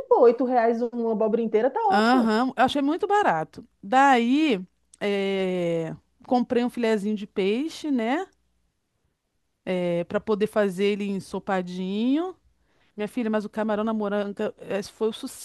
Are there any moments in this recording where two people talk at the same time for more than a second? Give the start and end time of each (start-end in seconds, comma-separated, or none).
none